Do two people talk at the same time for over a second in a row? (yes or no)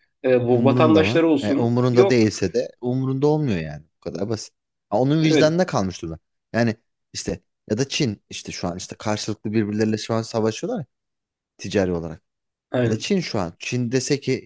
yes